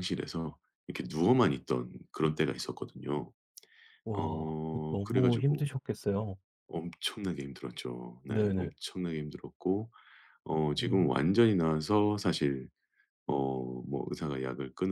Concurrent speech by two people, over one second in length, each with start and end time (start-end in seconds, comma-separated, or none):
4.2-5.7